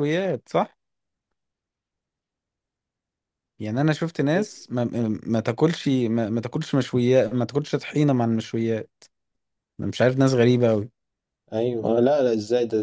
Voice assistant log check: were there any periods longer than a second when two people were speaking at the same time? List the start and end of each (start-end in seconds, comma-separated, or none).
none